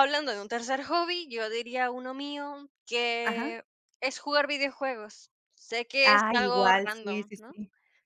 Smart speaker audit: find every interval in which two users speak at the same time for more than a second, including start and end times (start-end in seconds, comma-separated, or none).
6.0-7.5